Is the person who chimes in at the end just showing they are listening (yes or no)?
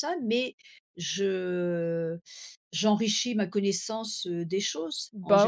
no